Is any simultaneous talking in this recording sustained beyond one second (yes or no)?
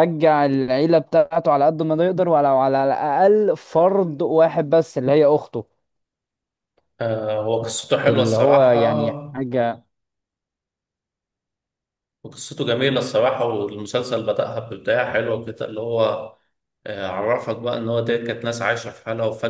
yes